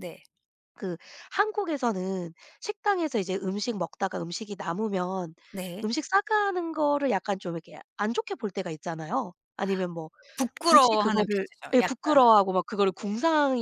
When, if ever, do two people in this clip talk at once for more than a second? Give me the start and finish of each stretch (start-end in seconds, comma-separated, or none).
10.6-12.2